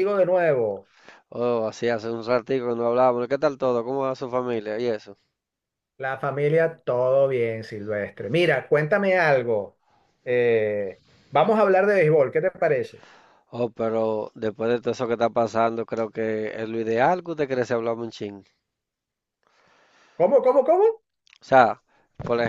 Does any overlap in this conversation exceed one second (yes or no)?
no